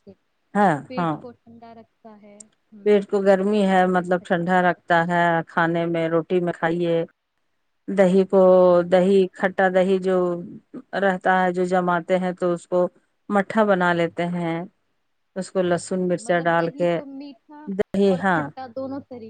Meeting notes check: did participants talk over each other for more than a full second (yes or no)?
yes